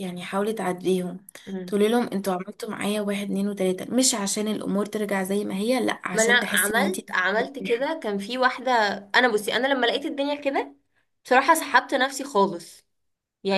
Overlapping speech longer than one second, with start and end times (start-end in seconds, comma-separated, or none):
6.1-7.9